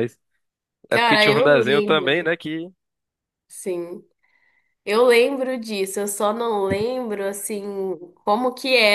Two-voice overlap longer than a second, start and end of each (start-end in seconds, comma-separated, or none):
0.9-2.3